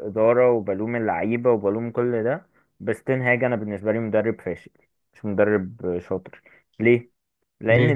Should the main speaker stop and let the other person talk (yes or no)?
no